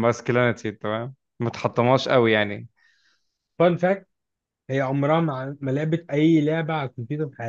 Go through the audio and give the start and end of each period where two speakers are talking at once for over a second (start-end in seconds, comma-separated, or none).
none